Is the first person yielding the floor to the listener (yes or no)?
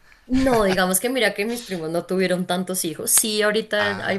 no